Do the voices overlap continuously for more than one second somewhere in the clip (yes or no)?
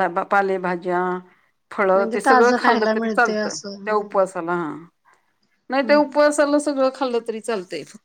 yes